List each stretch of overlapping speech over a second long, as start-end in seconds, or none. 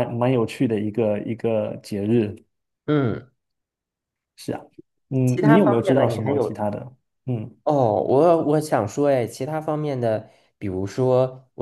5.2-6.6